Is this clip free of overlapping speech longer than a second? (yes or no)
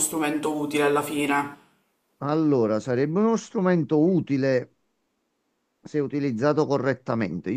yes